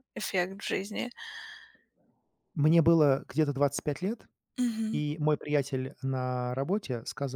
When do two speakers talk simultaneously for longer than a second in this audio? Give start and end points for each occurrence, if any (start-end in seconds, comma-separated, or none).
none